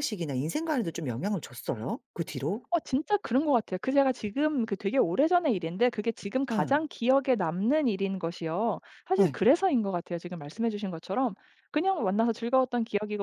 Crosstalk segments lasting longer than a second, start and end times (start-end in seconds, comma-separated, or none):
none